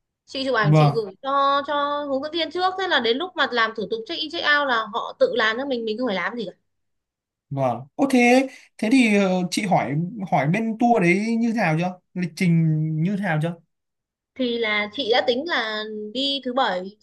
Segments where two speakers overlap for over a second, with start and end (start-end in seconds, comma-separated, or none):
none